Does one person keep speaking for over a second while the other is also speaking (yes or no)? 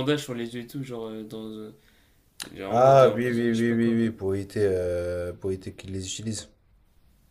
yes